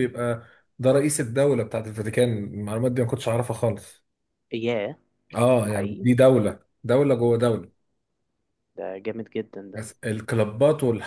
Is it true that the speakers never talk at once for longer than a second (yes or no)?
yes